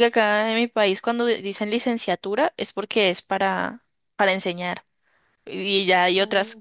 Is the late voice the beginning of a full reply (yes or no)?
no